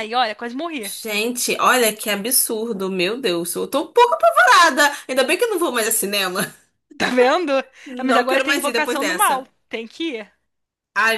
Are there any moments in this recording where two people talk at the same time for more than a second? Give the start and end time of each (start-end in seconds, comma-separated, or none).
8.0-9.5